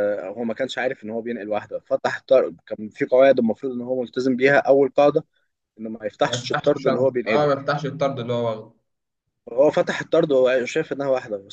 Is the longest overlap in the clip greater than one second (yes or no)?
yes